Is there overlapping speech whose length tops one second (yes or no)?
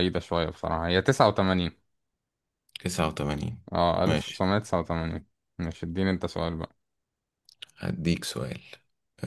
no